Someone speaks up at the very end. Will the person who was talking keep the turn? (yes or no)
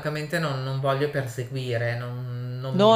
no